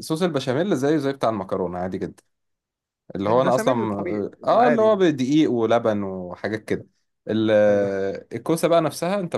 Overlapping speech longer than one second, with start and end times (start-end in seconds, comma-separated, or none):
3.3-5.0